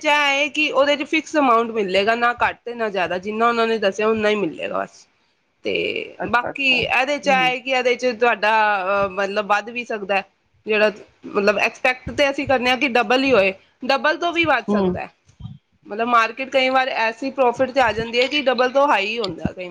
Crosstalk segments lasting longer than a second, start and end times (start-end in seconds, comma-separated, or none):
6.2-7.5